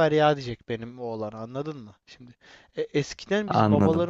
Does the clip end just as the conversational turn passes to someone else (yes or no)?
no